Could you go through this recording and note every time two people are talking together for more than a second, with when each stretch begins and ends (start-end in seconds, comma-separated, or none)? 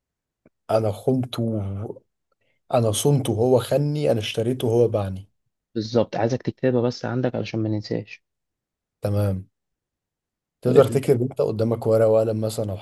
none